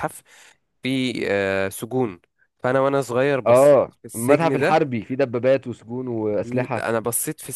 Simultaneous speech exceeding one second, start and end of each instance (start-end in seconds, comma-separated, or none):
3.5-4.8